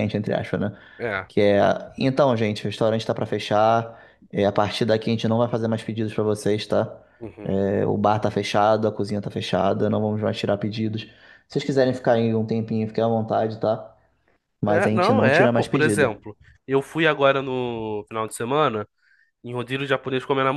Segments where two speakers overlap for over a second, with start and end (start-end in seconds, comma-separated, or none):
14.7-16.1